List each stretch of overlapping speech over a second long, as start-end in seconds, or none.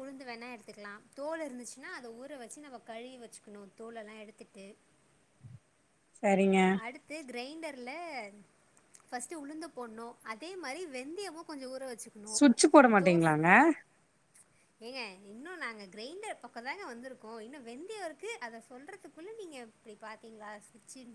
none